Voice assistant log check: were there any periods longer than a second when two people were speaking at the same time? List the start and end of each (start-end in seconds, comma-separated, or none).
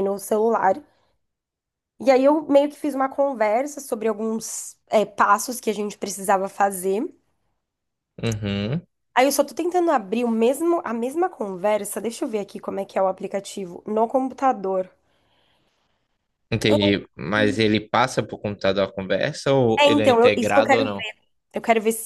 19.8-21.1